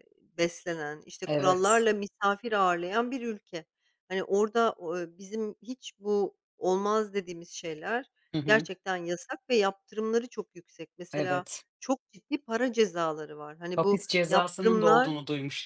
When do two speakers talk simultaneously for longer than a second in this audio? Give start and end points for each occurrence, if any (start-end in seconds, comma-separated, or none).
13.8-15.1